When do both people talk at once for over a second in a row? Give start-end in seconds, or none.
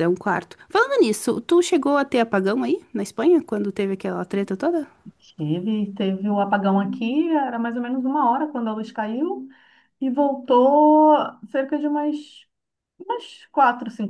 none